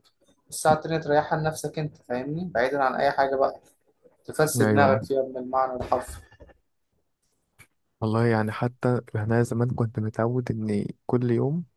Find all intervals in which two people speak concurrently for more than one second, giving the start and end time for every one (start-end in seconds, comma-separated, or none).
none